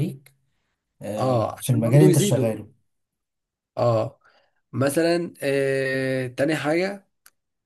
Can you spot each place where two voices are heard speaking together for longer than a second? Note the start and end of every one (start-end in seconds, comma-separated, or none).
1.2-2.5